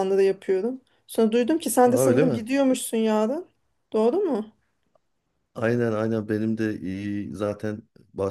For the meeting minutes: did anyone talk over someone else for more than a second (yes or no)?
no